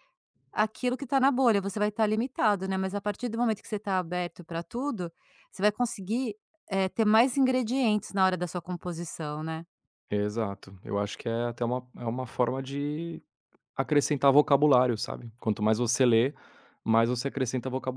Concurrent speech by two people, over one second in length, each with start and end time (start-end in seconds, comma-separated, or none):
none